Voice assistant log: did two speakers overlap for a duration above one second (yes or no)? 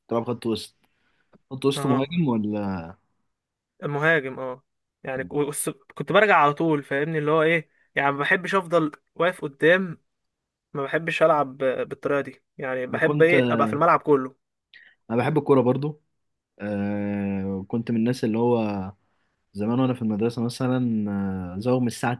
no